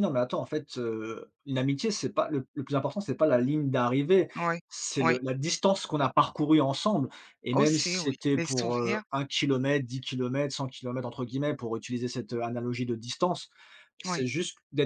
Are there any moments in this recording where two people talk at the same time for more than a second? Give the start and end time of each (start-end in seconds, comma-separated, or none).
7.5-9.0